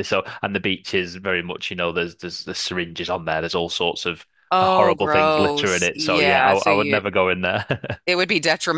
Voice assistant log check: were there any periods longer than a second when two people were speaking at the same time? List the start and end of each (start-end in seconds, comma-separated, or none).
4.5-7.0